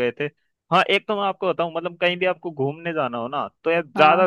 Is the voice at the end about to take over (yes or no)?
no